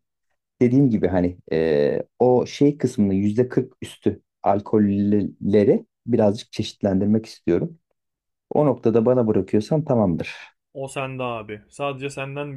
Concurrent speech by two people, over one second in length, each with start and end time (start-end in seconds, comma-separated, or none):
none